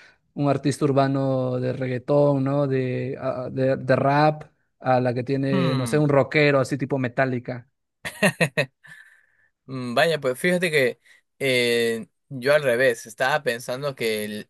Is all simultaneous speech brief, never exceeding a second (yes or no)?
yes